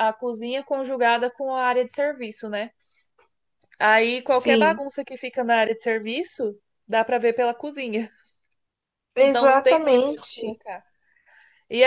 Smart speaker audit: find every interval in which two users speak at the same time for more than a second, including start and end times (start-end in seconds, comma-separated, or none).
9.2-10.6